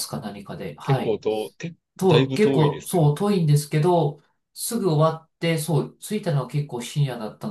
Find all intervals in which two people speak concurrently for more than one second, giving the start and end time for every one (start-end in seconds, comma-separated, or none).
2.0-3.2